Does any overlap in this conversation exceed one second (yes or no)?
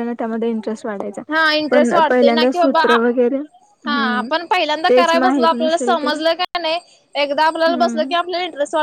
yes